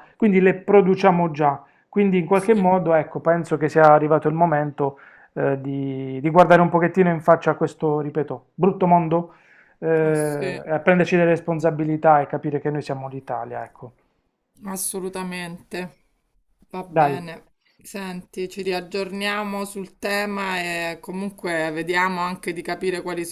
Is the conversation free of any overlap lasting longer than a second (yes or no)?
yes